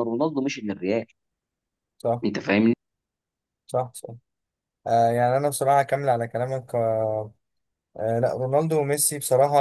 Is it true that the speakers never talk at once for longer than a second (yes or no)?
yes